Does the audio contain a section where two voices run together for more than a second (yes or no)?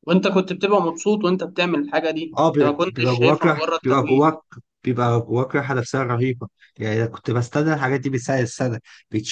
yes